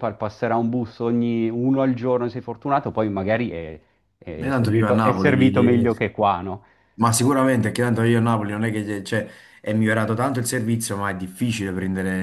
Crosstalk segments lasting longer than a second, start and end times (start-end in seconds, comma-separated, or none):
4.4-5.9